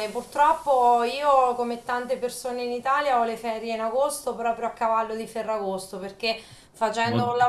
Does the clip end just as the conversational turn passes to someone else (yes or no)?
no